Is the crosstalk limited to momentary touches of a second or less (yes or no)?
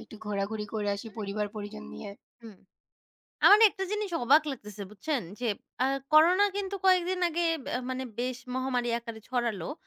yes